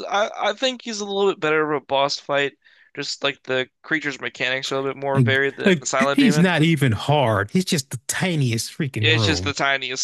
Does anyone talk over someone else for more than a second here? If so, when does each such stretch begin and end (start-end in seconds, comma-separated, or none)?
5.1-6.5